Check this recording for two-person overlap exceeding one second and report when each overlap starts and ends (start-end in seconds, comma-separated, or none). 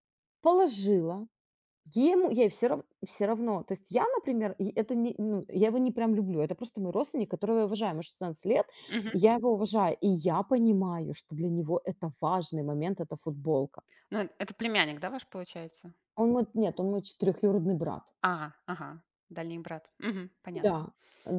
none